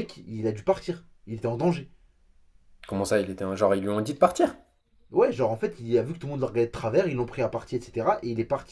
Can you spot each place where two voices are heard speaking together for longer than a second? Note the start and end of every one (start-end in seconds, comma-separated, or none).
none